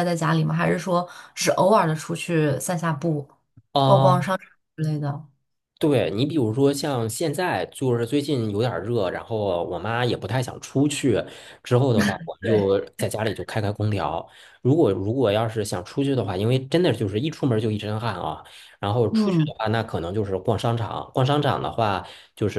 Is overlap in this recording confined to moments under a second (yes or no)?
yes